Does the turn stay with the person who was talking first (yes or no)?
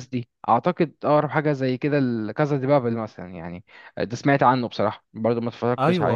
no